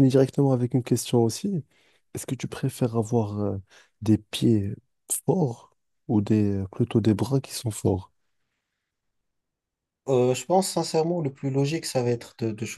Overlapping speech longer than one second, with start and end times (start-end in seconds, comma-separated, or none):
none